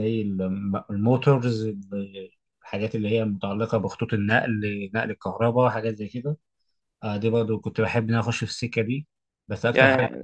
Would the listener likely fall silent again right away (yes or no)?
no